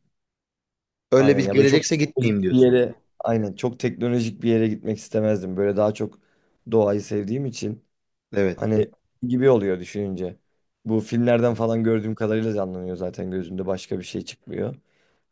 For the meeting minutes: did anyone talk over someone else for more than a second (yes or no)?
yes